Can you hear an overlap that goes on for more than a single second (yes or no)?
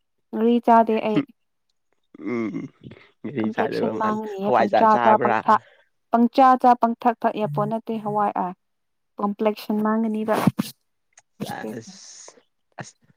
yes